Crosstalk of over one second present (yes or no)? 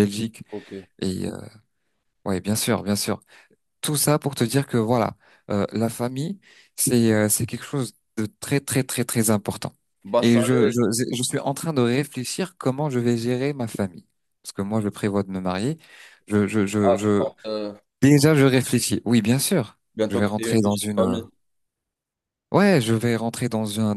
yes